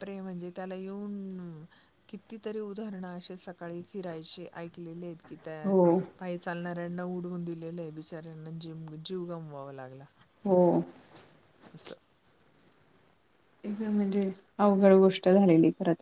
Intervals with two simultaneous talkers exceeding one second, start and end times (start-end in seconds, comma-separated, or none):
none